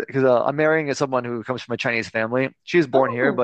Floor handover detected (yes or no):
no